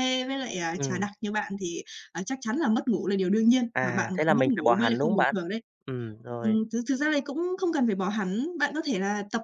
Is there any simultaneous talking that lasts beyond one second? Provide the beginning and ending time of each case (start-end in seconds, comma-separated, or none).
3.7-5.4